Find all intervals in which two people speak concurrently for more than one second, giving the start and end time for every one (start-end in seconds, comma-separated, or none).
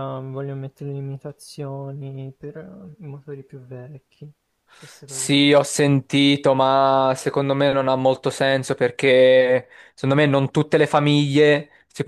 none